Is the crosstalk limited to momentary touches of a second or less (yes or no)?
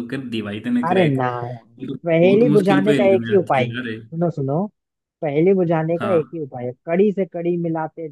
no